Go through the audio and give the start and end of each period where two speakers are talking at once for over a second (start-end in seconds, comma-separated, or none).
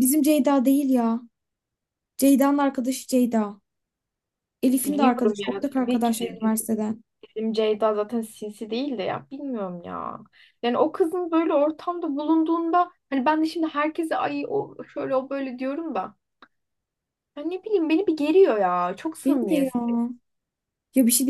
4.8-6.5